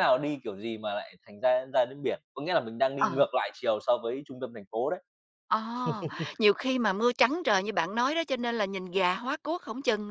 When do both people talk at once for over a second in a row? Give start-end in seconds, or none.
none